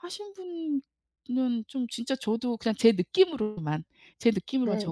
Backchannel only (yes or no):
yes